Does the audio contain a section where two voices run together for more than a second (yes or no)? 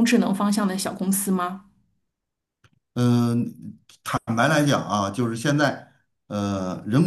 no